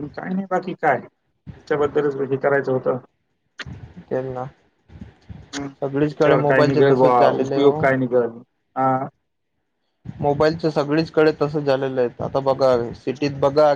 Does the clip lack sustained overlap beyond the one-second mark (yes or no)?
no